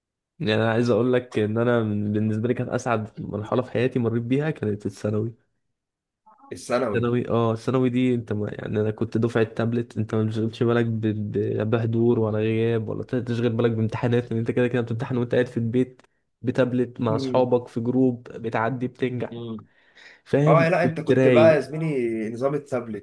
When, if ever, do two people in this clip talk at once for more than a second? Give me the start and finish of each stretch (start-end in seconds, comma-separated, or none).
20.5-21.7